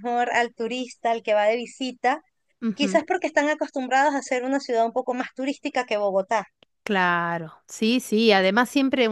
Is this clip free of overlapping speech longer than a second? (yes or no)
yes